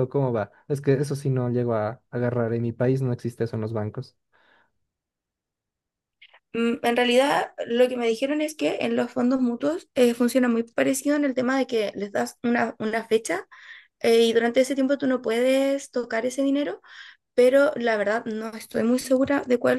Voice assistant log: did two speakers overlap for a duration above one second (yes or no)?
no